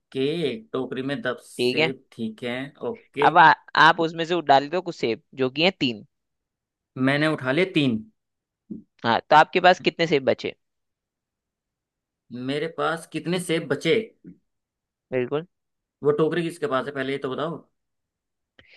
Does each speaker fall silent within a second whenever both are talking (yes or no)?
yes